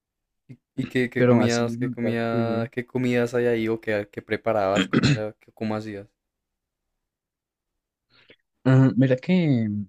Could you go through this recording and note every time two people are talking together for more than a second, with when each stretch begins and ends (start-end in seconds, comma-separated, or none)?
1.1-2.7